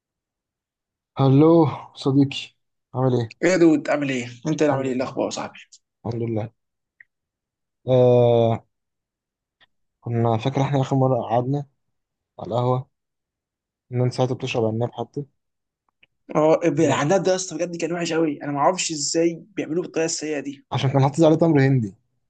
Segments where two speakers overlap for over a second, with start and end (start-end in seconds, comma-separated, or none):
none